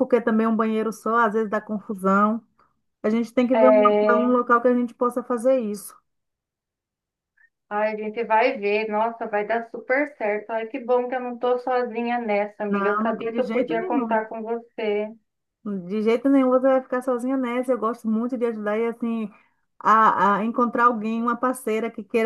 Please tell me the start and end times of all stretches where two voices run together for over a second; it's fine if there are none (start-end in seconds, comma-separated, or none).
12.7-14.2